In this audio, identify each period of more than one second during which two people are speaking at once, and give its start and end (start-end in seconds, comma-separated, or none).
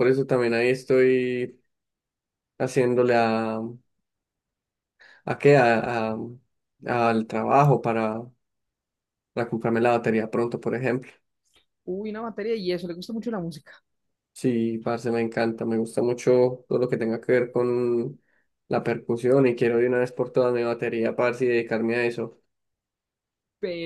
none